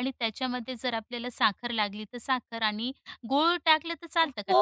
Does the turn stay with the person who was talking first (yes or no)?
no